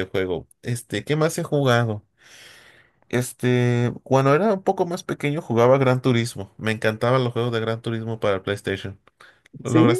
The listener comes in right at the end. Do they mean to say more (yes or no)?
yes